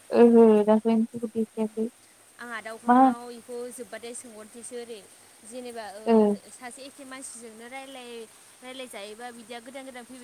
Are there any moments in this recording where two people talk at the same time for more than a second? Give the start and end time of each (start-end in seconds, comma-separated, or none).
none